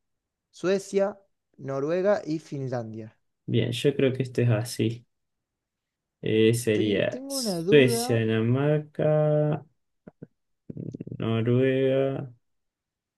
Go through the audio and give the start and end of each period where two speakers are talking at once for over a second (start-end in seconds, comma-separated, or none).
6.7-8.2